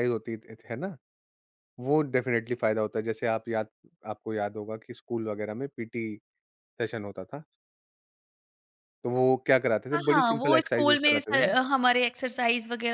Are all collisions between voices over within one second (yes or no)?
no